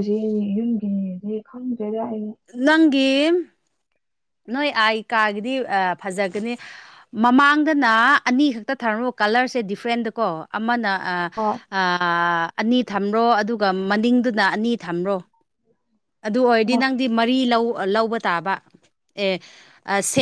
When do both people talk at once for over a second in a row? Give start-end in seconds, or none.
none